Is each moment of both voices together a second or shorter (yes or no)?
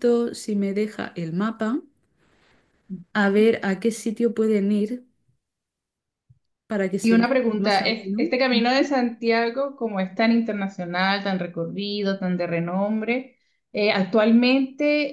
no